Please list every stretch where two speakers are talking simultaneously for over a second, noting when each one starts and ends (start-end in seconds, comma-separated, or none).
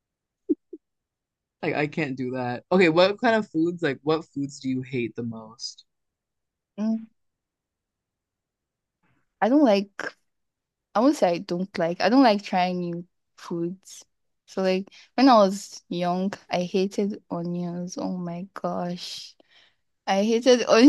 none